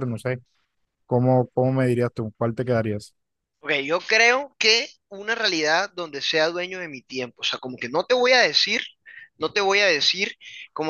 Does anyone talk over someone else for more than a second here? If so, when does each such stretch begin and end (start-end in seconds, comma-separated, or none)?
none